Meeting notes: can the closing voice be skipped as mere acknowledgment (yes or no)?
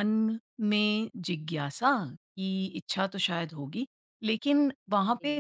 yes